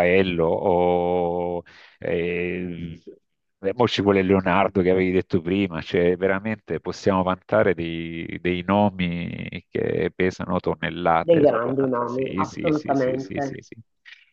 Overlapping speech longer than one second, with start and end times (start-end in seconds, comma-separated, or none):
11.2-13.6